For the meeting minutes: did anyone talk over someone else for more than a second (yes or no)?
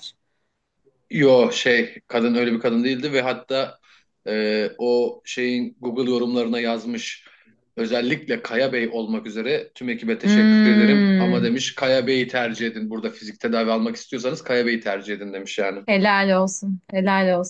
yes